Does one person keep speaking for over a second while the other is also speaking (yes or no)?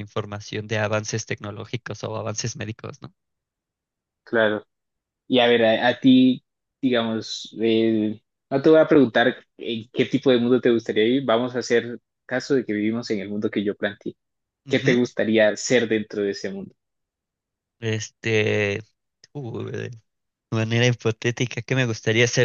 no